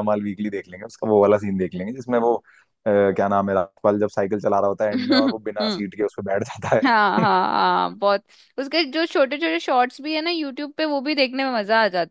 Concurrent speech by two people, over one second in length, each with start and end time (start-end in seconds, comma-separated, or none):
none